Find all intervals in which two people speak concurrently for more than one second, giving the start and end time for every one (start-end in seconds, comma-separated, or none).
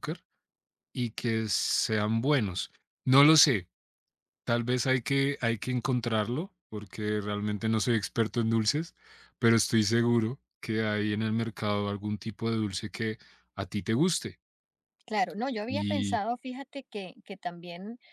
none